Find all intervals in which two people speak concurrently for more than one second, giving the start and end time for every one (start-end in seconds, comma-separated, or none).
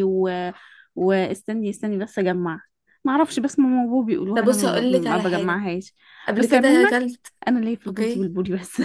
4.3-5.6